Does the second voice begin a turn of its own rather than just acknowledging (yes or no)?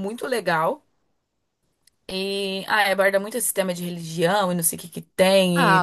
no